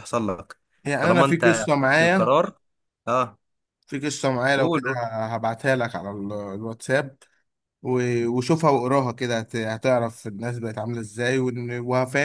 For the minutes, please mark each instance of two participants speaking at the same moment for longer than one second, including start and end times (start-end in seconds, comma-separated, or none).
1.0-2.4